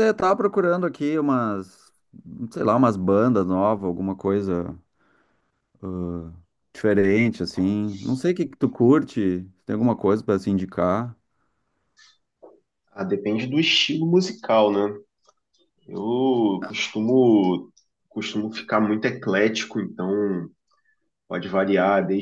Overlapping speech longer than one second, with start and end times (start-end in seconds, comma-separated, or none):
none